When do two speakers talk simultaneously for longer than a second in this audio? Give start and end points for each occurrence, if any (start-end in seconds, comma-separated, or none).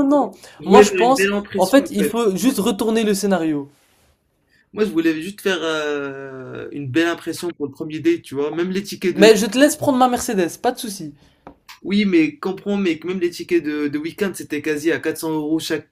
0.6-2.1